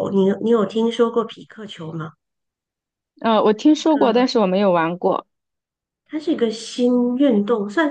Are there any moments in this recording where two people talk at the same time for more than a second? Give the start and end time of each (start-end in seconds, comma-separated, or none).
none